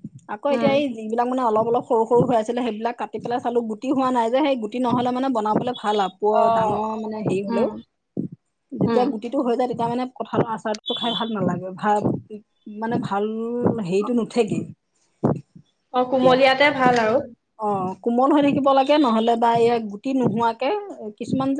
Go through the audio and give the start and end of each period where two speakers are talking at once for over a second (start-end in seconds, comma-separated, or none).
none